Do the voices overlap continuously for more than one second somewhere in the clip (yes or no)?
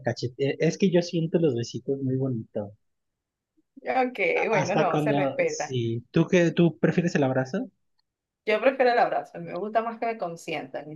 yes